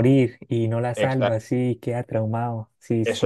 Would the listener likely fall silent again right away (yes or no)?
no